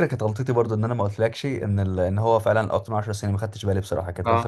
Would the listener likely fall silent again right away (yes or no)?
no